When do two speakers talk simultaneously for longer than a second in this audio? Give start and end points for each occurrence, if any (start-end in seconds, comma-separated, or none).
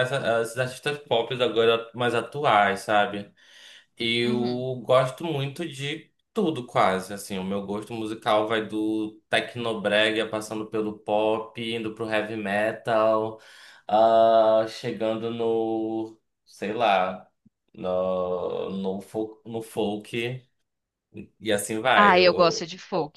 none